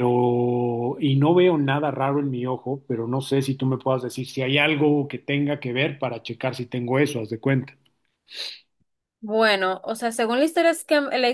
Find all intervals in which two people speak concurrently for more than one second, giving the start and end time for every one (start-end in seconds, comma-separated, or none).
none